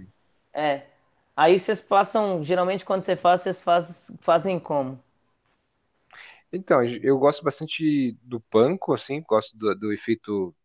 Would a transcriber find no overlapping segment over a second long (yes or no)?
yes